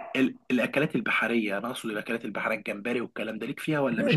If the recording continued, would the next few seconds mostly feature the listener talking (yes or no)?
yes